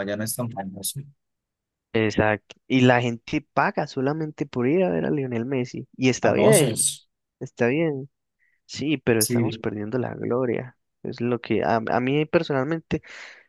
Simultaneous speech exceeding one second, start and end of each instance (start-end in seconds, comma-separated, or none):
none